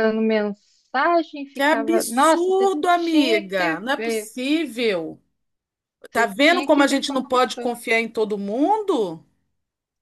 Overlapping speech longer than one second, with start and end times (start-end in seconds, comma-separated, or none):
1.5-4.3, 6.1-7.7